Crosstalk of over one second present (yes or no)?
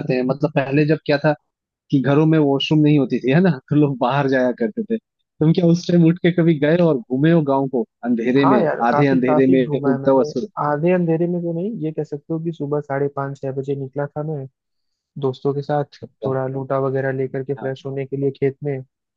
yes